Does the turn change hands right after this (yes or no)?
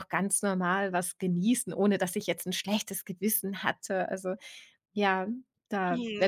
yes